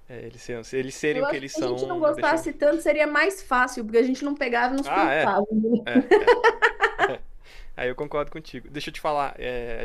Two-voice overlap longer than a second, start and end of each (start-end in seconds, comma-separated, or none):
1.1-2.4